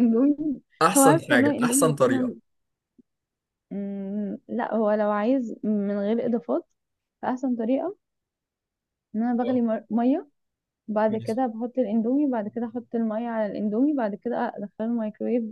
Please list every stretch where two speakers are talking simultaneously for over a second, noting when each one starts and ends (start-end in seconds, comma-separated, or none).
0.9-2.3